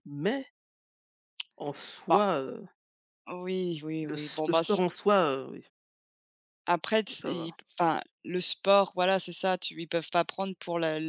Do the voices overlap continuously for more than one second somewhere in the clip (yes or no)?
no